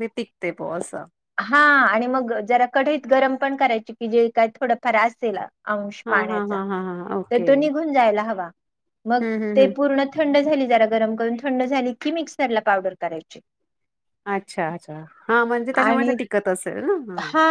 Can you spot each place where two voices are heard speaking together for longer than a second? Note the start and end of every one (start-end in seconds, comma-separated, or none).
none